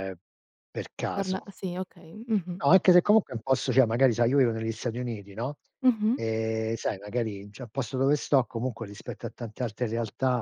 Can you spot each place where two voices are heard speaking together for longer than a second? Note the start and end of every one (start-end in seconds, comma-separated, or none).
none